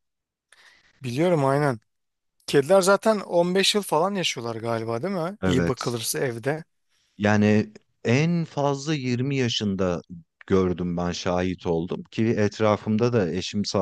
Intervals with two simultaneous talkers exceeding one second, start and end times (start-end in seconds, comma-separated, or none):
none